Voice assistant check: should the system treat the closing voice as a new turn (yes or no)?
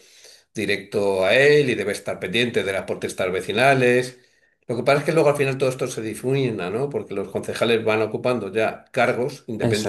no